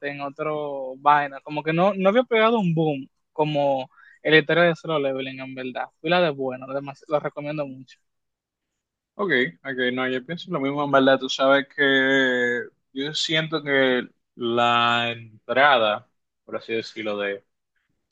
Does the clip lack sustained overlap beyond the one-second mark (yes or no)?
yes